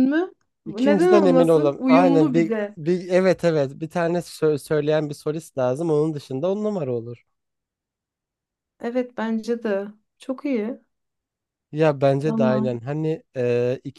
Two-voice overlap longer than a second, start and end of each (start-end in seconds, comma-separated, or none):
0.7-2.8